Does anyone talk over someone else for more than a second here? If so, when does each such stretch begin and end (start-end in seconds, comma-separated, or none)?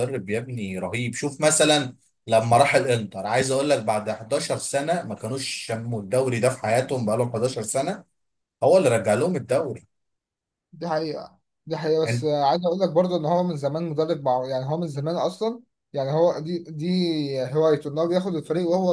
none